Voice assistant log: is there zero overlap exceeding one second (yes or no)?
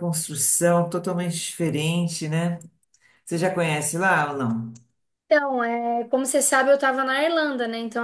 yes